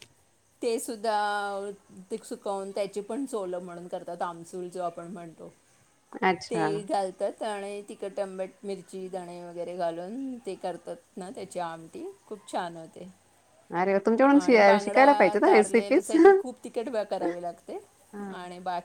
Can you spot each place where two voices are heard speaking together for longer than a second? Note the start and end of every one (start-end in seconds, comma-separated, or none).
14.4-16.1